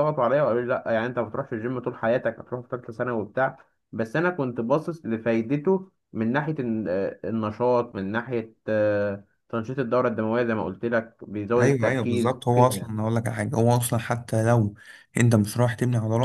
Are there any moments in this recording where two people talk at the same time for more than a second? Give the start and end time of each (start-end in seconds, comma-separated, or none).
11.6-13.0